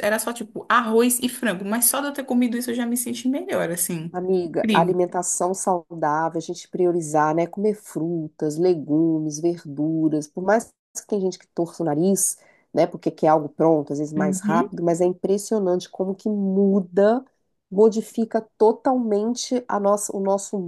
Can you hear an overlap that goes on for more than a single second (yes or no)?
no